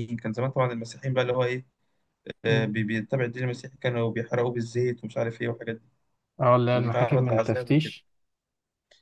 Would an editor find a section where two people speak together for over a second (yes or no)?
yes